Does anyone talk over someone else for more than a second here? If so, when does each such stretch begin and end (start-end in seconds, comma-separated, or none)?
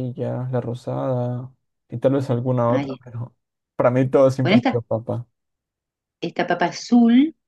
none